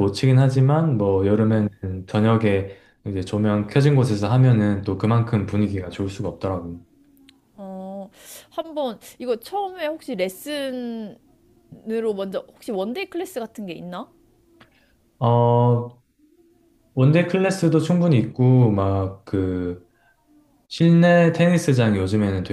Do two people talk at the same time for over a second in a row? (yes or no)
no